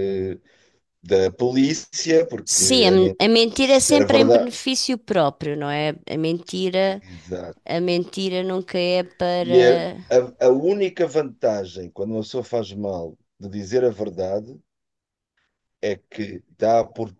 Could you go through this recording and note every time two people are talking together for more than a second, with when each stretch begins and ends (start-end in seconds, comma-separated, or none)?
2.4-4.5